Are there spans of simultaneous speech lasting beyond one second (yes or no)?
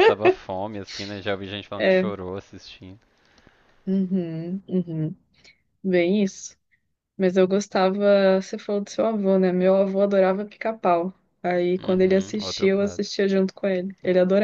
yes